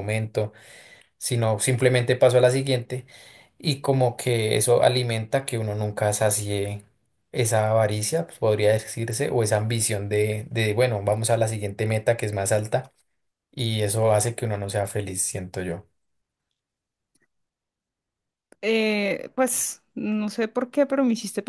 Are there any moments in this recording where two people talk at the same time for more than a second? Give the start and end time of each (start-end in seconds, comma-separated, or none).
none